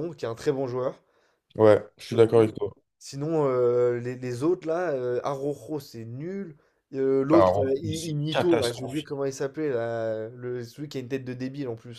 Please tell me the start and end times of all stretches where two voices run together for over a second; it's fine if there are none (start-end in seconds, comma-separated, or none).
7.3-9.1